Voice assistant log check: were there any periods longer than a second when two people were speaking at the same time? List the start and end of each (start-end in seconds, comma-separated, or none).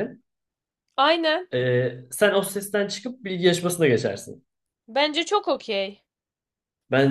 none